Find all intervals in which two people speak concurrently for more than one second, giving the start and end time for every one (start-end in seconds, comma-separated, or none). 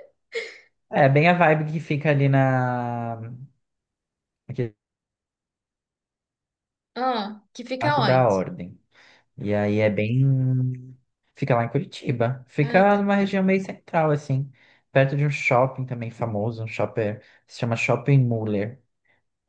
none